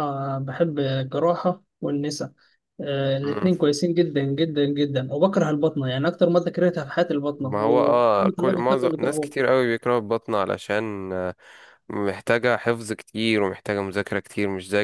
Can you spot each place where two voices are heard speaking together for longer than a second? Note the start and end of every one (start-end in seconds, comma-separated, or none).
7.4-9.3